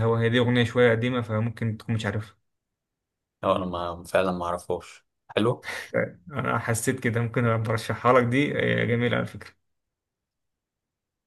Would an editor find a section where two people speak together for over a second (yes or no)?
no